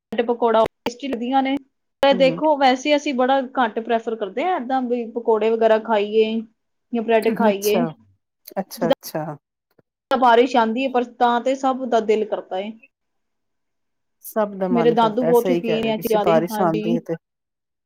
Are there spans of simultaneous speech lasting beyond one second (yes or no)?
yes